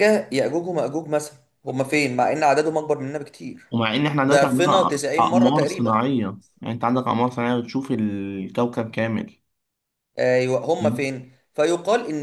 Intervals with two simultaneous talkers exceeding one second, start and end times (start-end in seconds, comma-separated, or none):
4.2-6.0